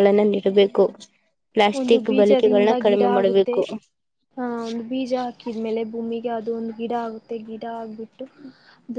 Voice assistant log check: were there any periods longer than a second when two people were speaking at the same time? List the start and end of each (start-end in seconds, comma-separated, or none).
1.8-3.5